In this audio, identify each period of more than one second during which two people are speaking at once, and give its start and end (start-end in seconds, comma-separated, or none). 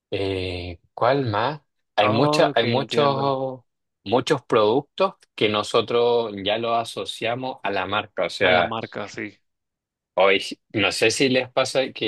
2.0-3.4